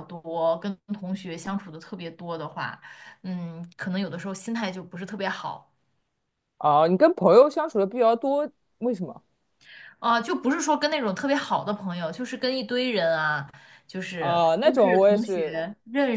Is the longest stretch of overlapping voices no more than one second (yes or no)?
no